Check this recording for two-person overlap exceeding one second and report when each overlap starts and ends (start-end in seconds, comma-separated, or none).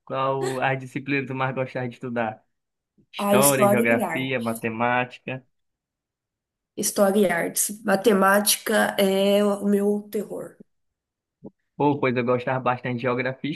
3.2-4.6